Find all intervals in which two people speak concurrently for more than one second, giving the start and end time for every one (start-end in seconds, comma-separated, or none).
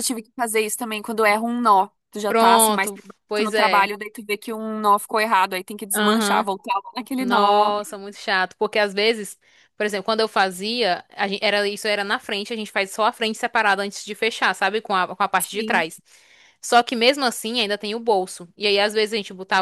2.3-3.9